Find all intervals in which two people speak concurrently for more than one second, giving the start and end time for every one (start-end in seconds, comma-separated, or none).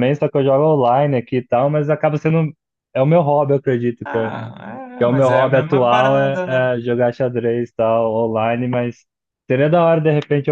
5.0-6.7